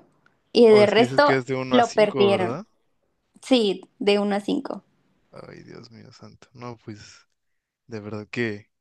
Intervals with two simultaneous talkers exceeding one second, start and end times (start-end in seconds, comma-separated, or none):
0.7-2.6